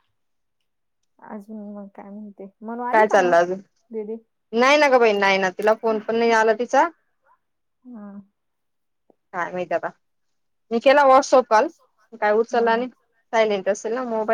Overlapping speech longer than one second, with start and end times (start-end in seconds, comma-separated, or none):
none